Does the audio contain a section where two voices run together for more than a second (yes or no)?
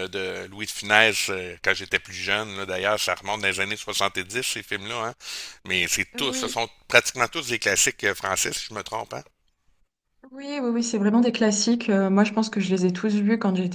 no